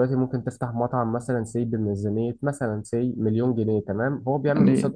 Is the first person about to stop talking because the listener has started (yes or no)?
no